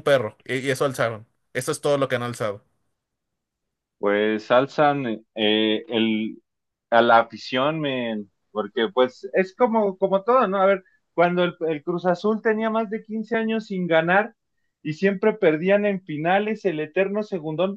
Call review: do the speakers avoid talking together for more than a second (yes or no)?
yes